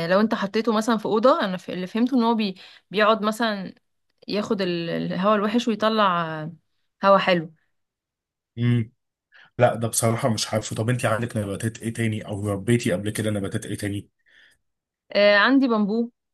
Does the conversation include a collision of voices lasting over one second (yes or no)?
no